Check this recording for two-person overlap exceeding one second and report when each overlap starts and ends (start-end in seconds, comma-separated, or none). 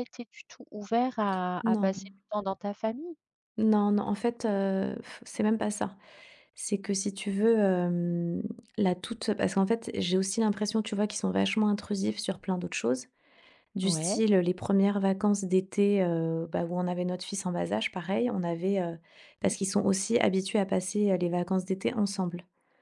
none